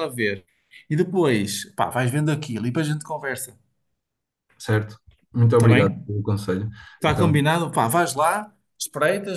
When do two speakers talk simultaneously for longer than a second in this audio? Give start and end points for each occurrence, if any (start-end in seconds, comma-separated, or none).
none